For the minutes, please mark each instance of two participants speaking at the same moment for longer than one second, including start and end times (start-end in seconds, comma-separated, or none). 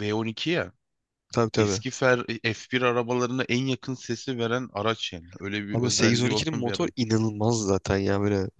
5.7-6.9